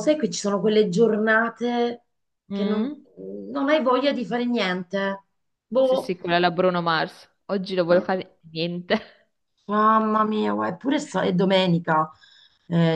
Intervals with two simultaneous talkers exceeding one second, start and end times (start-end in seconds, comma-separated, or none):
none